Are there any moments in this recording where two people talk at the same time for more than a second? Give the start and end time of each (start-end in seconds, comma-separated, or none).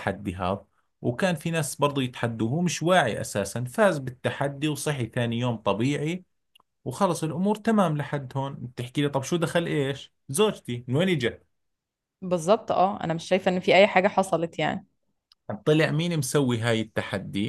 none